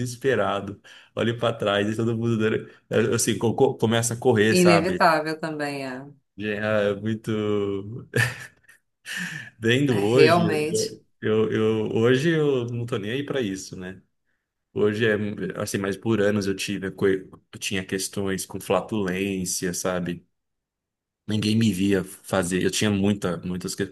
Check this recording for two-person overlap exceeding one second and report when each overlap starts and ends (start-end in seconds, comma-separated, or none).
none